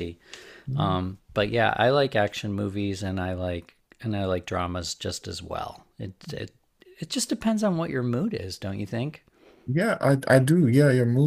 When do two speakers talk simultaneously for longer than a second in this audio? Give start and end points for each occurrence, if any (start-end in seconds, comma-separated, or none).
none